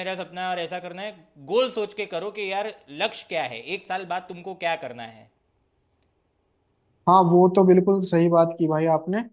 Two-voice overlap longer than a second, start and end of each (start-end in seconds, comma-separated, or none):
none